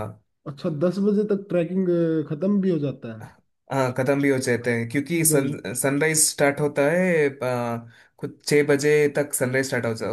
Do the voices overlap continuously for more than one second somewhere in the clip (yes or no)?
no